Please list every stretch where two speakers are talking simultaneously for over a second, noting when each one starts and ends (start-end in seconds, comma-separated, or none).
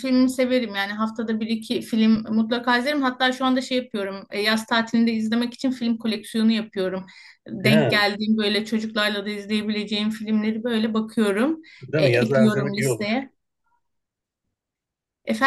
11.8-13.1